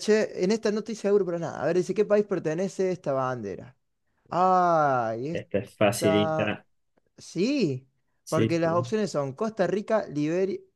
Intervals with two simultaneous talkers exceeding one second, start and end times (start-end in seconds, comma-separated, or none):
5.3-6.6